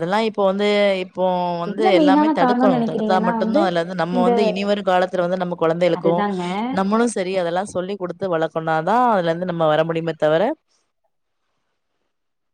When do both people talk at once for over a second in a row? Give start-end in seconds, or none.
1.7-3.3